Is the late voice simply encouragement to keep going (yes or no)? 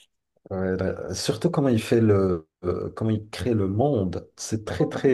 yes